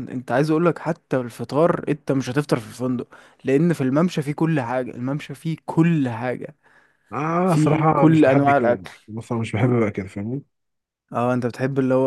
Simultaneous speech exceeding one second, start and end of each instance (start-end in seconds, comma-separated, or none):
7.4-8.9